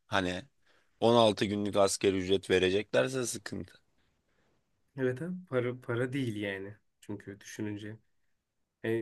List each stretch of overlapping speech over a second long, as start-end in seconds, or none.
none